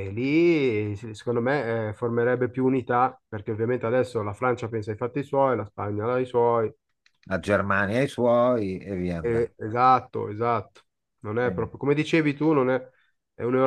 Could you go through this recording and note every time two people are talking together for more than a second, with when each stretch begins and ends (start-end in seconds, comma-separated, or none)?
none